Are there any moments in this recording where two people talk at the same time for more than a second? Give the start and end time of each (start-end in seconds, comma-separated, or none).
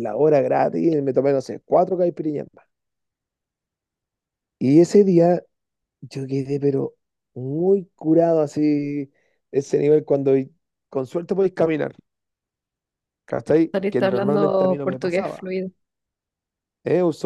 13.7-15.4